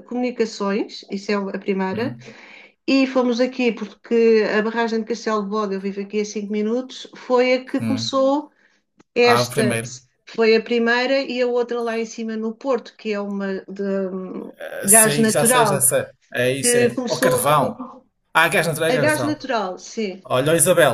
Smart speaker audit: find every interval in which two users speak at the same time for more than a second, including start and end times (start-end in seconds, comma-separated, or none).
14.6-15.8, 16.6-17.8